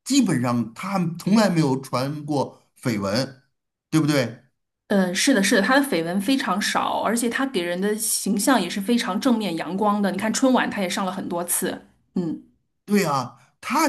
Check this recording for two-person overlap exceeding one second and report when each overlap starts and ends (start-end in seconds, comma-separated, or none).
none